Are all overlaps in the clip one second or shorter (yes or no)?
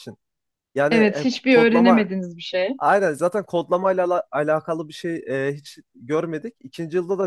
no